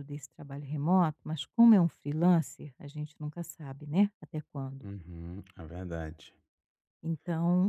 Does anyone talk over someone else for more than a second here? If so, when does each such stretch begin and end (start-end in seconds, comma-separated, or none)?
none